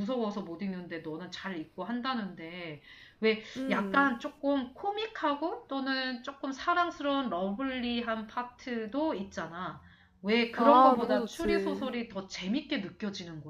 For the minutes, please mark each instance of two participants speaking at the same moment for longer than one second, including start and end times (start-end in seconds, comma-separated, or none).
10.6-11.9